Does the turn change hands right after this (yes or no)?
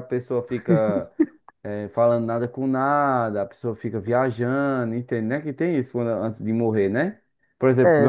yes